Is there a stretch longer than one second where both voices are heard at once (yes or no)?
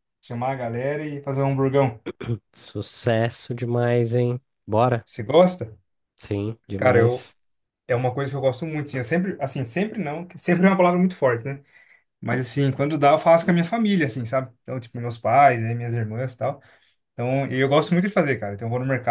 no